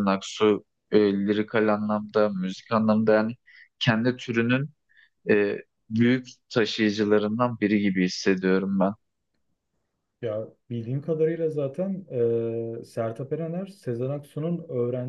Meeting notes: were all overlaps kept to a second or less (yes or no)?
yes